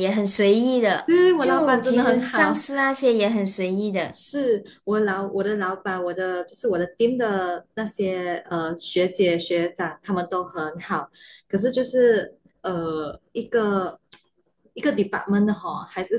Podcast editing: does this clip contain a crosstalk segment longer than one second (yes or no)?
yes